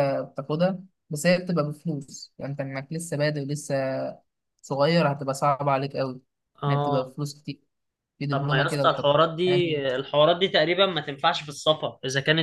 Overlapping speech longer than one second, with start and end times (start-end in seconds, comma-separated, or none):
8.3-9.8